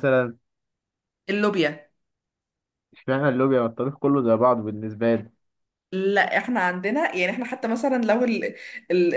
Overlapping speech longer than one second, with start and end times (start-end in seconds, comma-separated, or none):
none